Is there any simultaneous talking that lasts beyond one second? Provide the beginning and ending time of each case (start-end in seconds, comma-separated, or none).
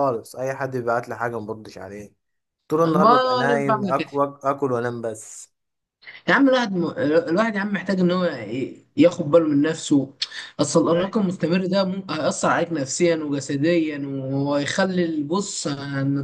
2.9-4.1